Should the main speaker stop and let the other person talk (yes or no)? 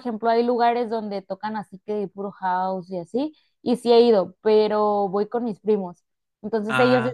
no